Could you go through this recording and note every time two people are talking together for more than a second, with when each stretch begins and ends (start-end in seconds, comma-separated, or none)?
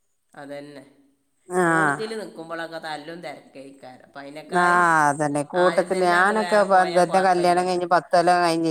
6.2-7.8